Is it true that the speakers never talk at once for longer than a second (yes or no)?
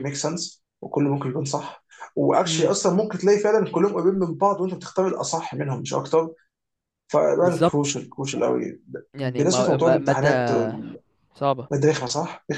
no